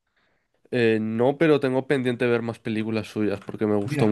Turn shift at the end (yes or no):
yes